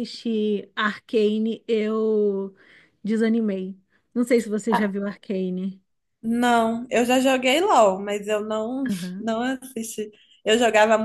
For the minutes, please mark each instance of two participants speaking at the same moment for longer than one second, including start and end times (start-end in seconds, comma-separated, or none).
none